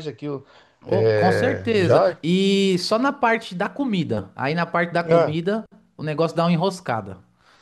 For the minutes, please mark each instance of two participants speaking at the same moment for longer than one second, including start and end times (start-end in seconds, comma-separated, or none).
0.9-2.2